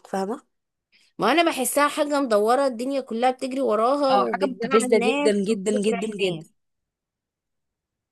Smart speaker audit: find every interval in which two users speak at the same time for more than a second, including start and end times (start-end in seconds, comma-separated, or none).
4.1-6.5